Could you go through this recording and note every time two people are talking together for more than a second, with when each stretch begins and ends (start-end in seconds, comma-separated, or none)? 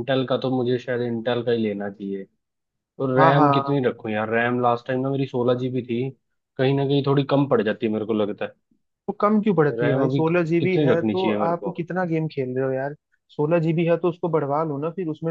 9.7-11.7